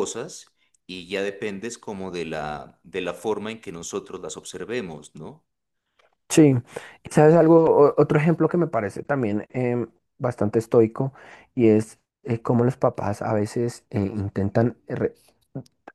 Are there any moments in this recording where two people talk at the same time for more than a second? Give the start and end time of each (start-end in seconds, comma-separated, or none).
none